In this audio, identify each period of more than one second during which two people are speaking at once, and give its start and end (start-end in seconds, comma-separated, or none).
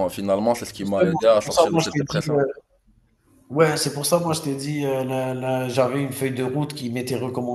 0.8-2.4